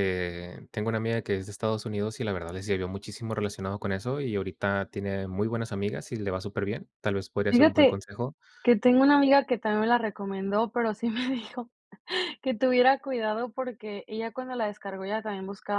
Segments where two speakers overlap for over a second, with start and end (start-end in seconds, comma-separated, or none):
none